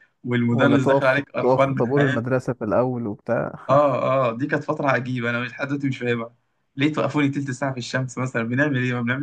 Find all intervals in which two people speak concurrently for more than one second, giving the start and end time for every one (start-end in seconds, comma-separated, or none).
0.5-2.4